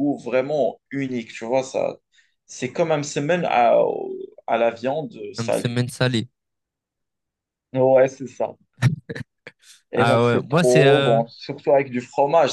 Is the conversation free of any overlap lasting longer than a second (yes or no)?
no